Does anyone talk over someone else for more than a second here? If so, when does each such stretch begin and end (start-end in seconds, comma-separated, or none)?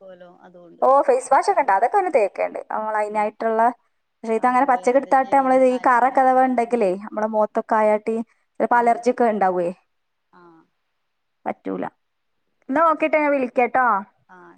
4.5-6.8